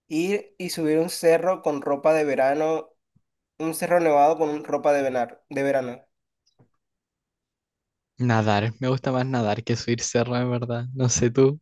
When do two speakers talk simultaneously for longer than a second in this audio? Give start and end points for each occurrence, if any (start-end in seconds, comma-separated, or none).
none